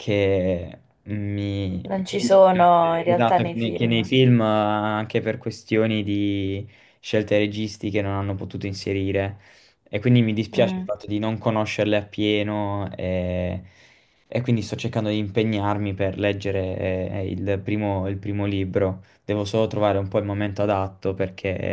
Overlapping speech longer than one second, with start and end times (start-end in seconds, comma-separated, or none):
1.8-4.1